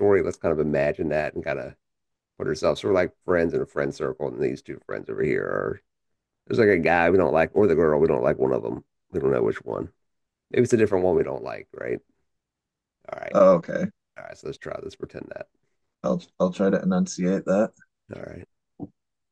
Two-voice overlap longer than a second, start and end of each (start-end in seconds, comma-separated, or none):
none